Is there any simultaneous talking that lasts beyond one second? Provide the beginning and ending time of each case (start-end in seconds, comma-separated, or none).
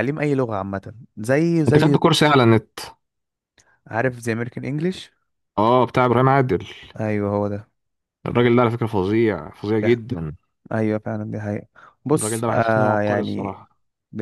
12.1-13.6